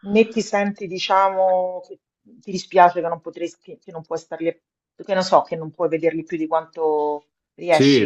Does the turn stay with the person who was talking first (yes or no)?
no